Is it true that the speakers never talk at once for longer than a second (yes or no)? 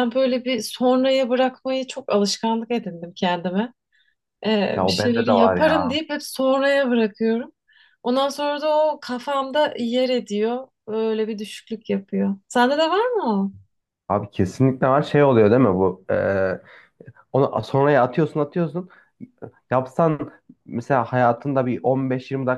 no